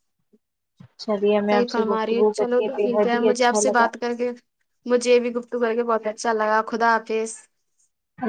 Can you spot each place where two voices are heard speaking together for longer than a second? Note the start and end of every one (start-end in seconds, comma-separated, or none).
1.5-3.9